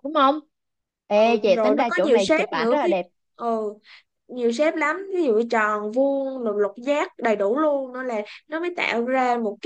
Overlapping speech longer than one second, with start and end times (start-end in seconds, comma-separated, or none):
1.2-3.0